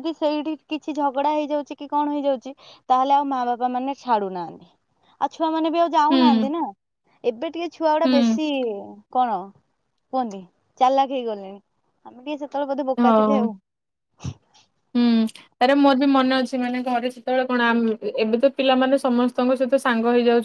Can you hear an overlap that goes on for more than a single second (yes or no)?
no